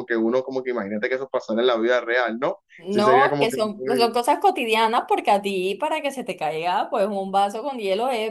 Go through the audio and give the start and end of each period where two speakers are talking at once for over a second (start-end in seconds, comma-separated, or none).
2.8-4.2